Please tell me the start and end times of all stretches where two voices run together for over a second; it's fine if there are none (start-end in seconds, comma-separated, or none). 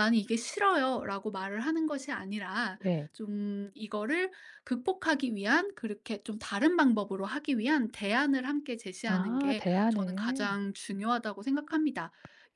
9.1-10.5